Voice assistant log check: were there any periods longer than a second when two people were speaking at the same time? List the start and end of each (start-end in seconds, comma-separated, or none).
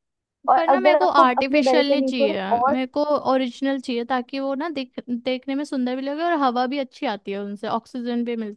0.6-2.8